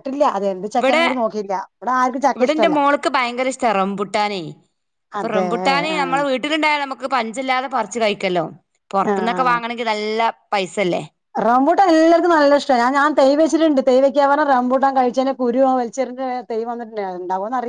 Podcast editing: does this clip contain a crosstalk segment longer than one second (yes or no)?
no